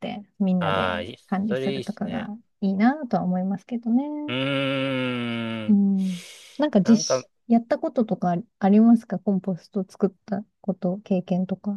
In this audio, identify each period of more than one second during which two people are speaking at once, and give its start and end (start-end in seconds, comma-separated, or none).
0.6-2.3